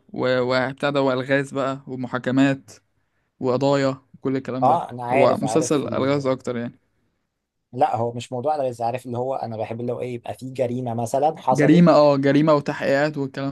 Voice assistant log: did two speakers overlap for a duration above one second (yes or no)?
yes